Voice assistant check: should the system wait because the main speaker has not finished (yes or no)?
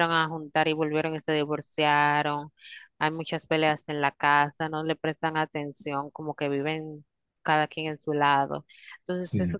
yes